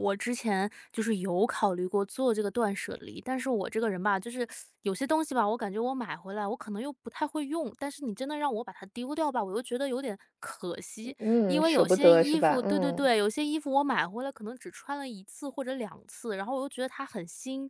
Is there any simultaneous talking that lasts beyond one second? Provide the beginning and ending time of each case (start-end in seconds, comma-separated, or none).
11.2-13.1